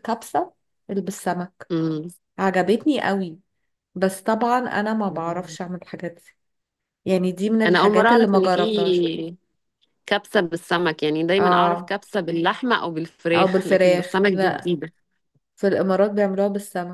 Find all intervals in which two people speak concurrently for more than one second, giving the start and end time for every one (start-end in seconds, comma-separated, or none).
7.7-9.1, 13.3-14.7